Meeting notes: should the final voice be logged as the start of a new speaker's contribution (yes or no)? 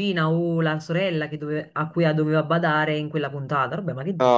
yes